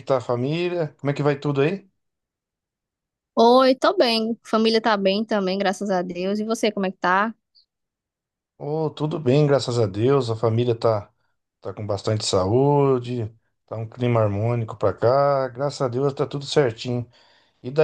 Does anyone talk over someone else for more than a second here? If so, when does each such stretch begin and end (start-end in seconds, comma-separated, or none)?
none